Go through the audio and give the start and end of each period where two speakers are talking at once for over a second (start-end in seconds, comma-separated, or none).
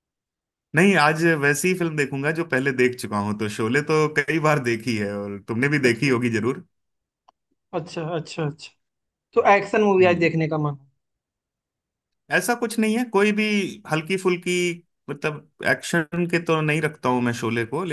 none